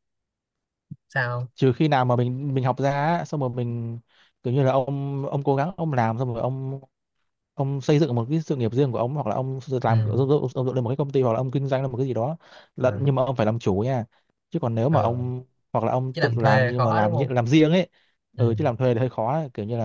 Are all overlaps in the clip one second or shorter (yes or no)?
no